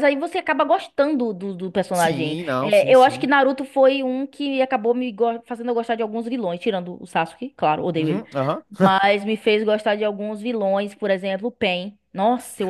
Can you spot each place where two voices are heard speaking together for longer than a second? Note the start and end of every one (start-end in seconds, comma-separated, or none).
1.9-3.3